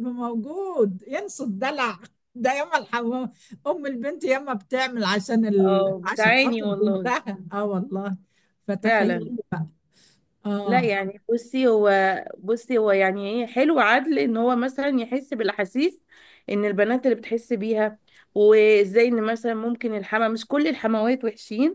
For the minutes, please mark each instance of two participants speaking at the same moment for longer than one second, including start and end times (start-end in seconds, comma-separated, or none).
5.6-7.1